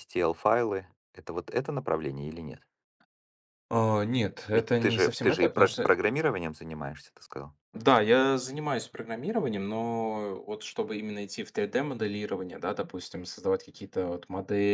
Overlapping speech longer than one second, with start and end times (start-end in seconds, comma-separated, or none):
4.5-5.9